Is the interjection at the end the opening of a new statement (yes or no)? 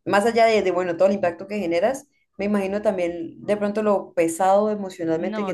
no